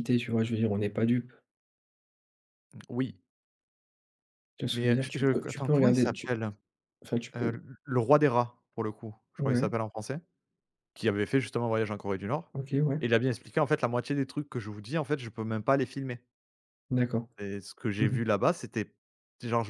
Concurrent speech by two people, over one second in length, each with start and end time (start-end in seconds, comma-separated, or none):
4.7-6.3